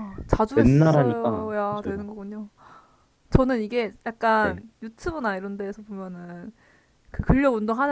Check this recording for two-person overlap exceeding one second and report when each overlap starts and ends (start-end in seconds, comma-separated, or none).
0.5-2.0